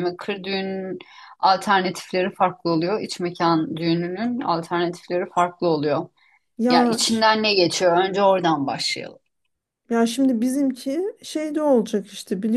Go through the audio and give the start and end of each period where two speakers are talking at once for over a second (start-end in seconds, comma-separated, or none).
none